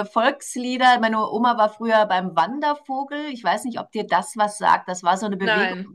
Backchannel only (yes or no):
yes